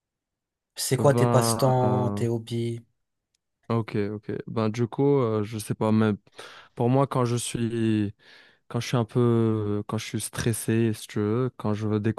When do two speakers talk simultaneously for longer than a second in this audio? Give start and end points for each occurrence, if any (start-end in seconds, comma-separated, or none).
1.0-2.2